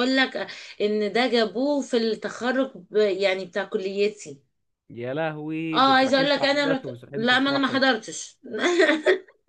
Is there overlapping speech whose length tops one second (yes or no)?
yes